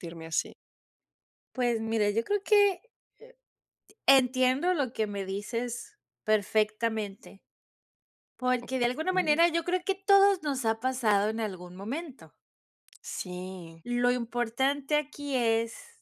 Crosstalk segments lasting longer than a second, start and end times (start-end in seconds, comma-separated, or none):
none